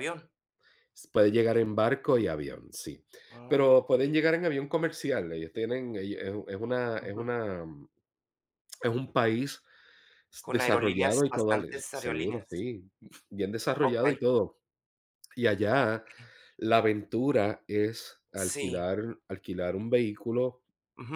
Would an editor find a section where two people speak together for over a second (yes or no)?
yes